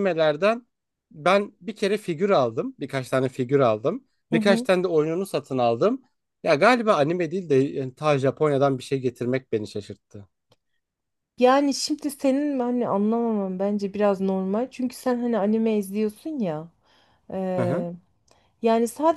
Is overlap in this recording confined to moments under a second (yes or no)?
yes